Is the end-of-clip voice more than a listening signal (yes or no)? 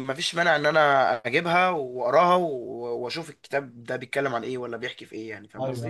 yes